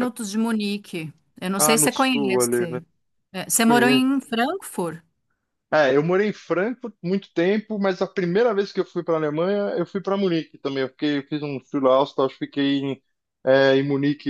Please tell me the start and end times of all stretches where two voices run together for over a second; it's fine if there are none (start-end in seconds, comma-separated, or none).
1.6-2.8